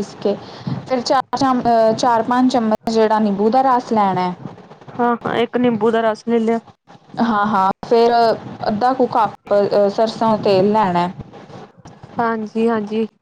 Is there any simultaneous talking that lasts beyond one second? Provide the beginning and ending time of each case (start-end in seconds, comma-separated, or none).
none